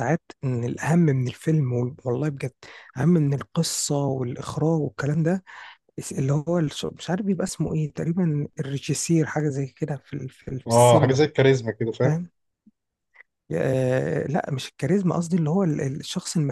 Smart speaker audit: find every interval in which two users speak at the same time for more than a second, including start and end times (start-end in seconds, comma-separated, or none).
none